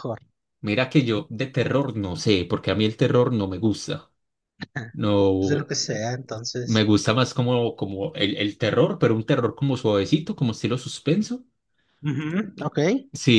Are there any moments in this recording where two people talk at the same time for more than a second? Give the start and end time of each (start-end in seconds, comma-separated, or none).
none